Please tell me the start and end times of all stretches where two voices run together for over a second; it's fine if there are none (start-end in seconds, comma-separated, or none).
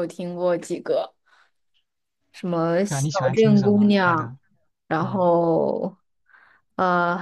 2.9-4.3